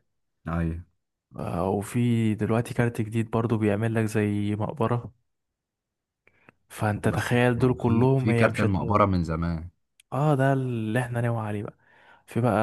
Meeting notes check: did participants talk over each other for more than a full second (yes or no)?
yes